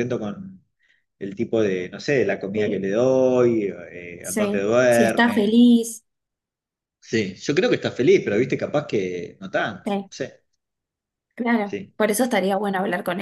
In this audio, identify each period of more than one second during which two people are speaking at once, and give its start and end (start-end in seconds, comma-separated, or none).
4.2-5.6